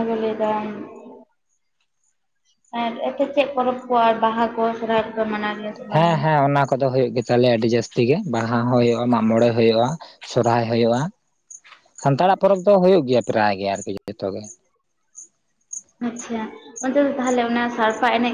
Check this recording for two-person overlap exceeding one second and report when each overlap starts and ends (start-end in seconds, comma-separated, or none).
none